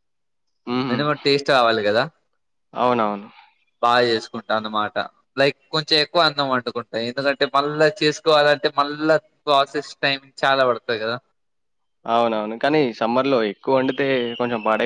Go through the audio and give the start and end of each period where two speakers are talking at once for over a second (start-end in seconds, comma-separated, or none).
none